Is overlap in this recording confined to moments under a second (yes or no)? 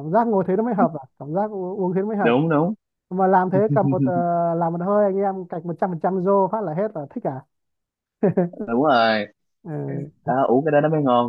yes